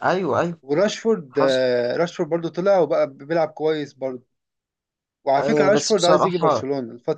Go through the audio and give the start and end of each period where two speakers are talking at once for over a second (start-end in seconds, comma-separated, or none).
5.4-6.6